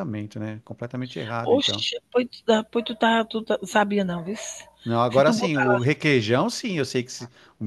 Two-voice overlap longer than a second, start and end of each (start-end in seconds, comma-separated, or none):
none